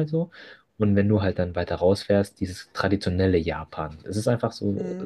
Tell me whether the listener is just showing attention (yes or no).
yes